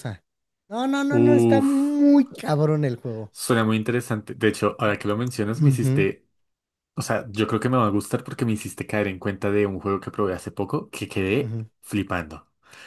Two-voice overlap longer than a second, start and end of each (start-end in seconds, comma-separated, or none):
none